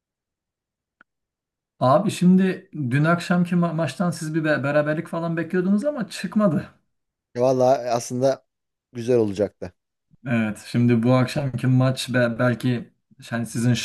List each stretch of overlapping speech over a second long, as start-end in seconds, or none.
none